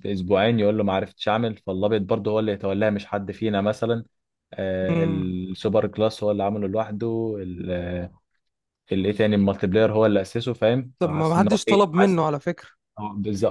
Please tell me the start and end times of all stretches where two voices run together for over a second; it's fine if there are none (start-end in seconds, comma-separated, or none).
11.0-12.2